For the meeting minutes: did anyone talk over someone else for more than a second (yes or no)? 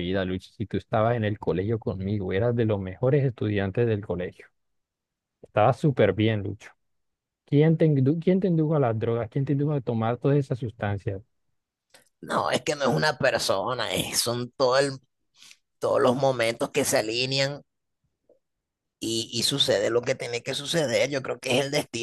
no